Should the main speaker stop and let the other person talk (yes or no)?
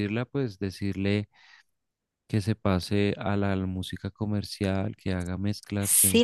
yes